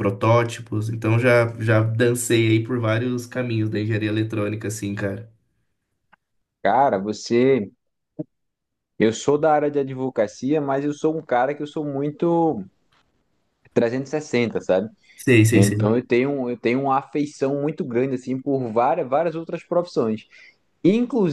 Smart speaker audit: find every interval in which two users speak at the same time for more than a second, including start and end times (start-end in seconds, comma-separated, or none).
none